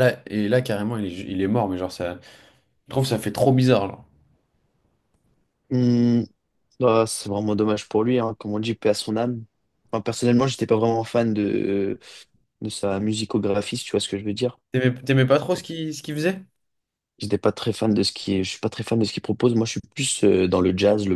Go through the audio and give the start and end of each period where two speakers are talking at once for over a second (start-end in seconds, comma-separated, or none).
none